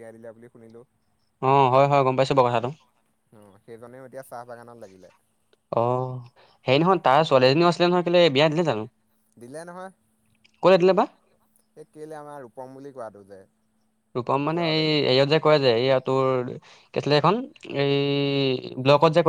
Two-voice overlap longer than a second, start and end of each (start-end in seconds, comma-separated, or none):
none